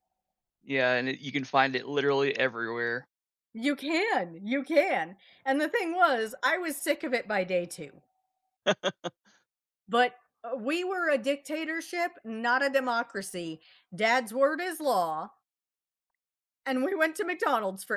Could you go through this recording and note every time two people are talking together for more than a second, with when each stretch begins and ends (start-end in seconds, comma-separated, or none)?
none